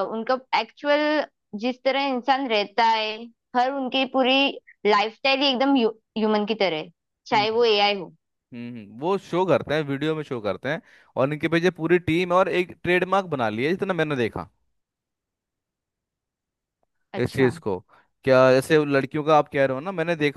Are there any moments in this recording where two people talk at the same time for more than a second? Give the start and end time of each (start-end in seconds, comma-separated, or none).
none